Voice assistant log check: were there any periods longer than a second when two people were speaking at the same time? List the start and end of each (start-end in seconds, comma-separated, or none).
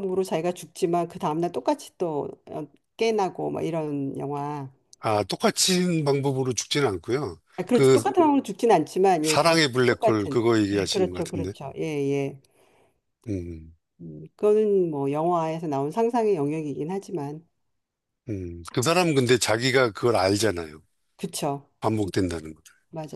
9.2-11.5